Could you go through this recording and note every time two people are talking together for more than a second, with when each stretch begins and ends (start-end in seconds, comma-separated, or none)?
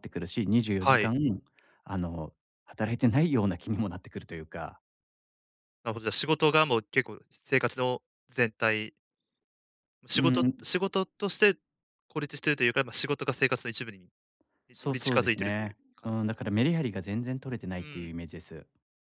14.8-16.4